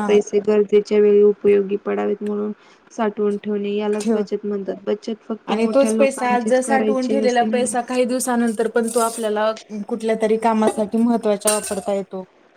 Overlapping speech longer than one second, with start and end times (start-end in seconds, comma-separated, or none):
5.5-7.7